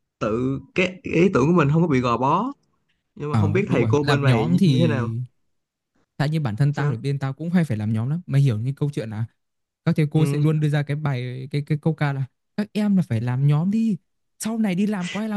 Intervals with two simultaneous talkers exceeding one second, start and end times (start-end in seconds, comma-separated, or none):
3.3-5.1